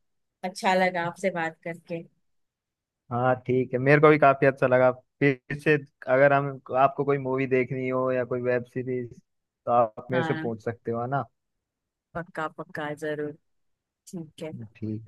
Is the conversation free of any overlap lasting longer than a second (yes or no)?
yes